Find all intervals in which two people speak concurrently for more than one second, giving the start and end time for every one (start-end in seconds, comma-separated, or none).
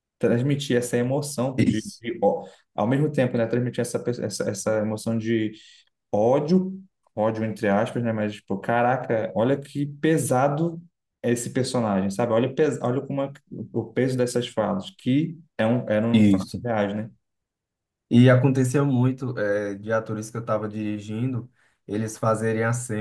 none